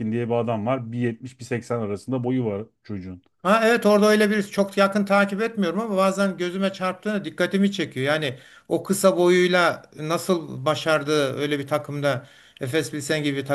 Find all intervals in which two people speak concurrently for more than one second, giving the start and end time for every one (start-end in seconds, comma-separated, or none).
none